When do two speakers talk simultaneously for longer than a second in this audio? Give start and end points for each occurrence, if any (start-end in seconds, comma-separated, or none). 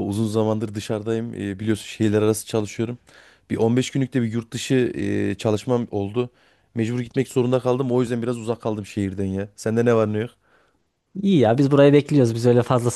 none